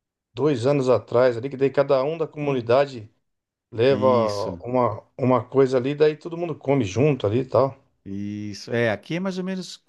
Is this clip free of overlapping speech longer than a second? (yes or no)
yes